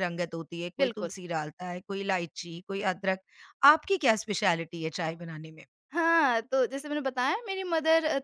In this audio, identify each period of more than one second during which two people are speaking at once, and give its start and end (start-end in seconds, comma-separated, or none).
none